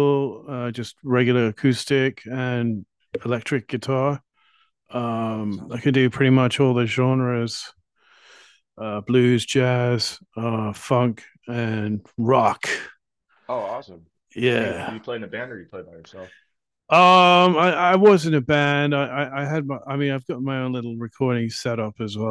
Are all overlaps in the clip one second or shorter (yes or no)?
yes